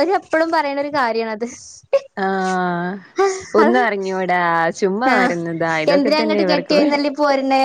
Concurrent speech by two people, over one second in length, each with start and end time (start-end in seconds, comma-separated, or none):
none